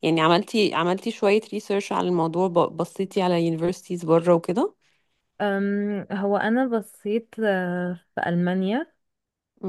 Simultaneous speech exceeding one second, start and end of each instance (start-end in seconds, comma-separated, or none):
none